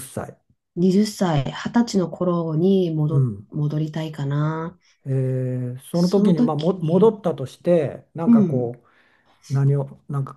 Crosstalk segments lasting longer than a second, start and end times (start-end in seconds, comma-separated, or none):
5.9-7.1